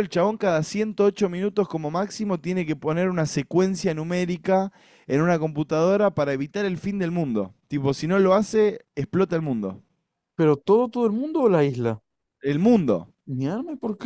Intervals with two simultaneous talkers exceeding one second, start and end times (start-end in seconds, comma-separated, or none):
none